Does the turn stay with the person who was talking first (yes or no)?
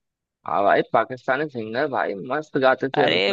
no